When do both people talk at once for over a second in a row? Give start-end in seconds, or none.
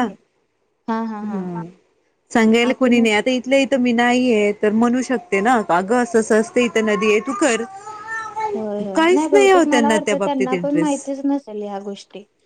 8.9-11.1